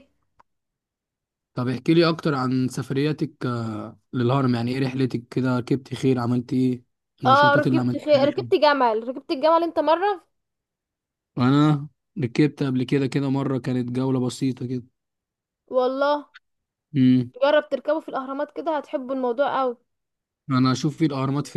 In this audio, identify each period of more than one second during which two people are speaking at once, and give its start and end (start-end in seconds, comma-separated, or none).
7.2-8.5